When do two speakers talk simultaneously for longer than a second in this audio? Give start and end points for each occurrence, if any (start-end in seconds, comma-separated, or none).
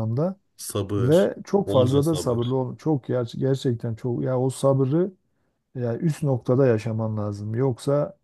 1.0-2.6